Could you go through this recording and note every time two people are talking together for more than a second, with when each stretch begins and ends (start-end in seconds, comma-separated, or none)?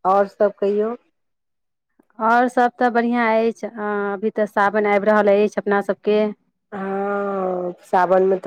none